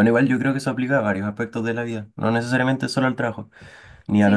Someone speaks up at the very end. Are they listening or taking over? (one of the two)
listening